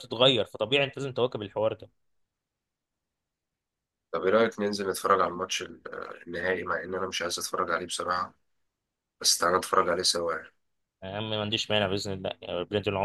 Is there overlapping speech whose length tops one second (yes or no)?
no